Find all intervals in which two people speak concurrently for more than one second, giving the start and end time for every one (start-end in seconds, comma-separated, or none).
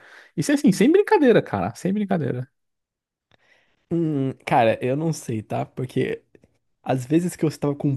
none